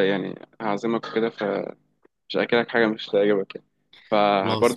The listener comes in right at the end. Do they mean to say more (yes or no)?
no